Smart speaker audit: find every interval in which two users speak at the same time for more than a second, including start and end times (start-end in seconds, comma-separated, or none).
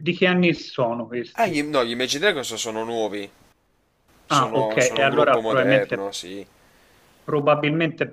4.3-6.1